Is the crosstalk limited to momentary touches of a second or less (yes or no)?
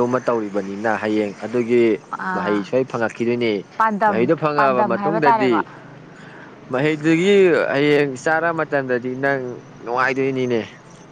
no